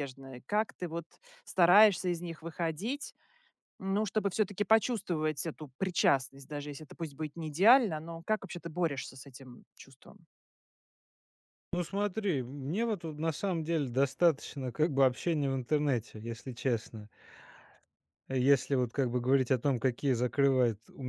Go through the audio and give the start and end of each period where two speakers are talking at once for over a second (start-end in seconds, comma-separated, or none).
none